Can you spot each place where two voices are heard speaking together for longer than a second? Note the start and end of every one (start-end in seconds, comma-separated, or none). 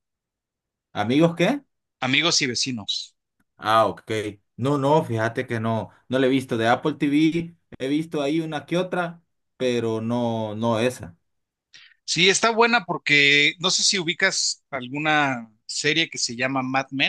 none